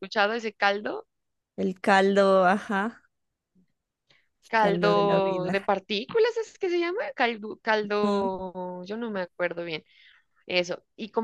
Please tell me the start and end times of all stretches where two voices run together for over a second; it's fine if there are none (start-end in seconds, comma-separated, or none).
4.5-5.7